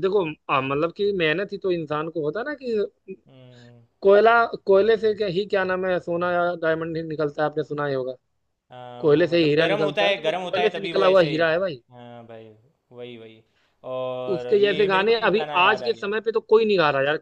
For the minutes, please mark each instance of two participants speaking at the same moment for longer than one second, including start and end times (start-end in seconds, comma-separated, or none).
9.0-11.3, 14.3-16.1